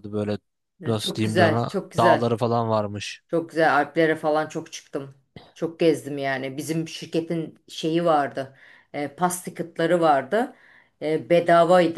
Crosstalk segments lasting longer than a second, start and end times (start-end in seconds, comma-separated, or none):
1.0-2.4